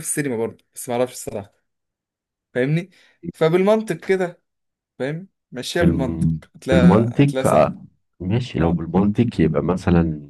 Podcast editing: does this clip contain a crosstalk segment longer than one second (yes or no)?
yes